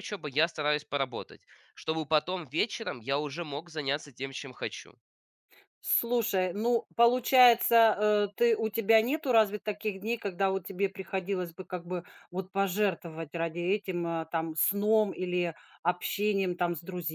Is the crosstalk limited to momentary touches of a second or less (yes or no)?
yes